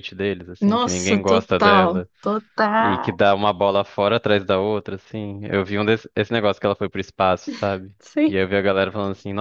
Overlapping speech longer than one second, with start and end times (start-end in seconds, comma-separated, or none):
0.6-2.1